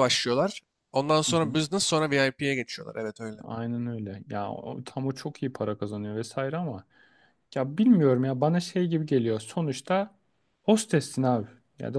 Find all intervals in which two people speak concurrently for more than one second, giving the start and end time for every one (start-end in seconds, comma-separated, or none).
none